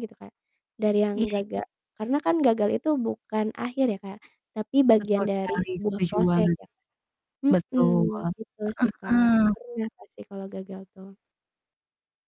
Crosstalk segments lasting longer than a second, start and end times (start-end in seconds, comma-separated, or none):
5.0-6.6